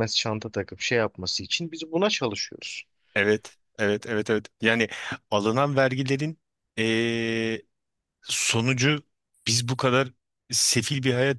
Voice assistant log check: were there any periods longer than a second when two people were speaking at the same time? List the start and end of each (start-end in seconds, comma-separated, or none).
none